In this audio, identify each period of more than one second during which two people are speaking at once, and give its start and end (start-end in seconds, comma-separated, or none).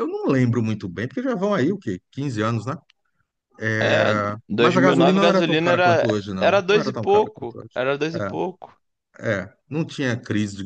3.8-7.8